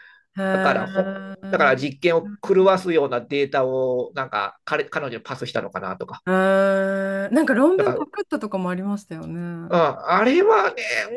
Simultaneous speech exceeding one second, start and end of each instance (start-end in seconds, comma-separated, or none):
0.5-2.0